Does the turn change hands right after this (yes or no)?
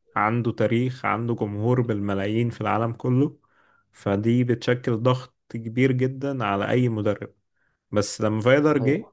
no